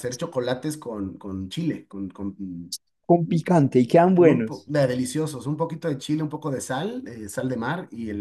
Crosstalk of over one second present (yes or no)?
no